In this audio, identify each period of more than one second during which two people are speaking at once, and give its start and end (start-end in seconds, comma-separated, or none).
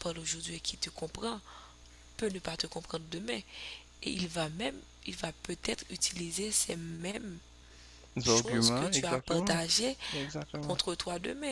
8.2-9.6